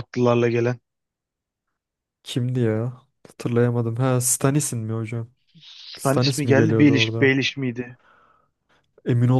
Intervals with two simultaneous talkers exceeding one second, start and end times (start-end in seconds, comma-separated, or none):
6.0-7.4